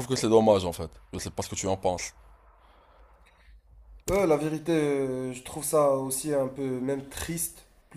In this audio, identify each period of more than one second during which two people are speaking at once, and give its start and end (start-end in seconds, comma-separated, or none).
none